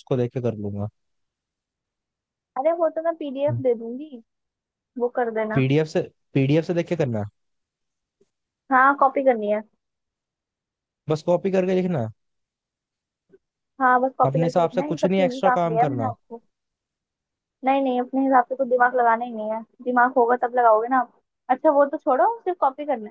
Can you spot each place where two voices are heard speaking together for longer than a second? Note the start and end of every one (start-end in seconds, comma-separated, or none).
14.2-16.1